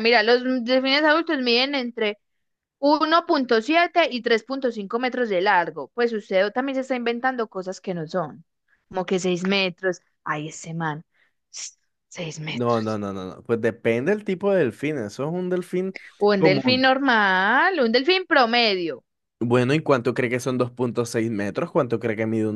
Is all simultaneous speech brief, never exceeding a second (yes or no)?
yes